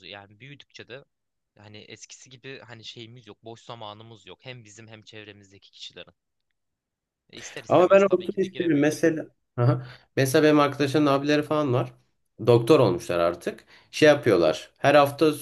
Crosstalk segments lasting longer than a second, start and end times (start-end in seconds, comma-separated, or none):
7.7-9.1